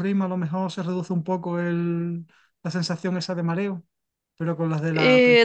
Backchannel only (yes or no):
no